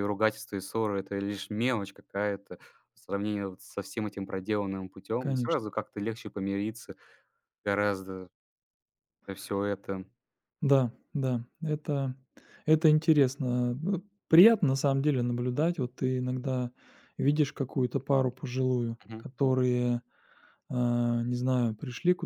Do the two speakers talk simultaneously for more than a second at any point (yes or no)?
no